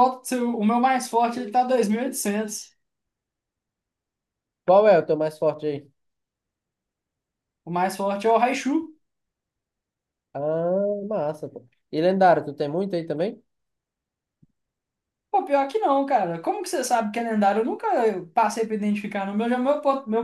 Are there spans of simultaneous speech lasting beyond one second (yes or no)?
no